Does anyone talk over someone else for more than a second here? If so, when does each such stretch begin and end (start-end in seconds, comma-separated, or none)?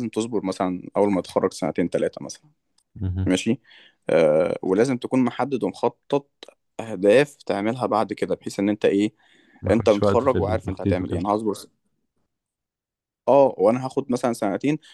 9.7-11.3